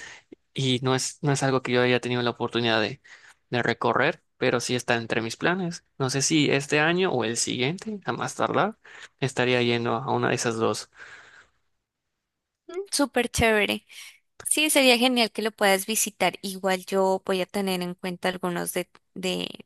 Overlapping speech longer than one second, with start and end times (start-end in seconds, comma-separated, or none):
none